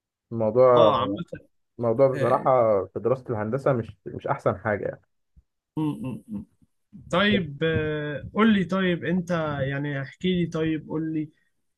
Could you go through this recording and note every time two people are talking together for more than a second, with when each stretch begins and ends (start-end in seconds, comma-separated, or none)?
none